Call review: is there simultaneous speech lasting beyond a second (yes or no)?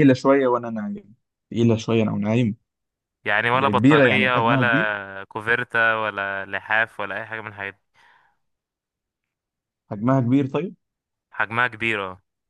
yes